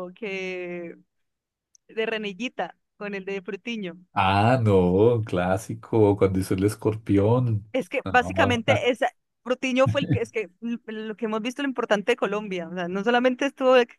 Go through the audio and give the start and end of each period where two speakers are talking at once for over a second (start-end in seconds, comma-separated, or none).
none